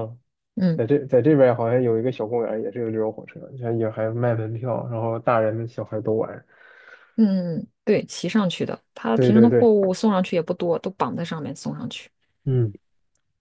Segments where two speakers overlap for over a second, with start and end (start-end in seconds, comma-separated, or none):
none